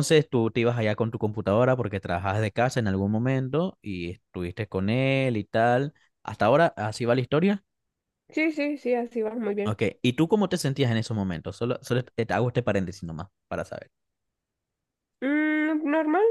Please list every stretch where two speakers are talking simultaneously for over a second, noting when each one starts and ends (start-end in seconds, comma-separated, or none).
none